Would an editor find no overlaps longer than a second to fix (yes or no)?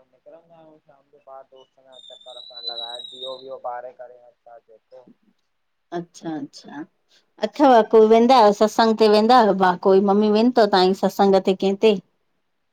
yes